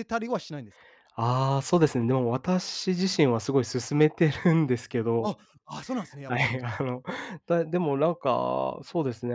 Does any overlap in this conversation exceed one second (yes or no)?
no